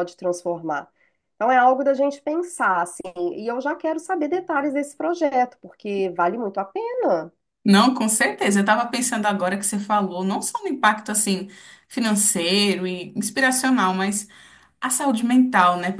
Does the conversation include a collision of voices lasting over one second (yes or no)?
no